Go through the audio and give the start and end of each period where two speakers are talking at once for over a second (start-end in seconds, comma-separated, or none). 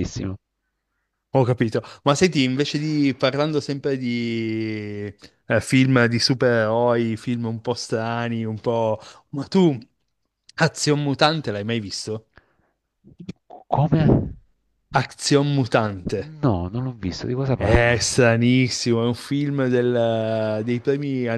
none